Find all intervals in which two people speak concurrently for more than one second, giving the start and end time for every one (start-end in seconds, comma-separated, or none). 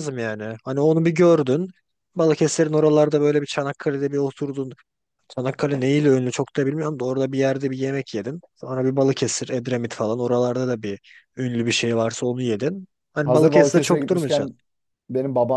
13.2-14.5